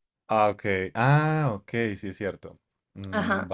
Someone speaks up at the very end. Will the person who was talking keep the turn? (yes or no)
no